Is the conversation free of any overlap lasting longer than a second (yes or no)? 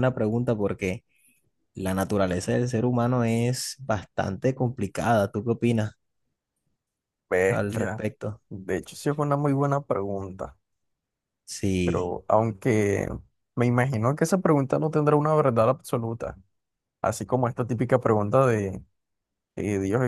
yes